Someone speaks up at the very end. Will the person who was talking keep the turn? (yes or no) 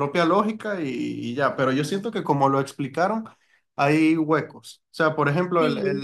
yes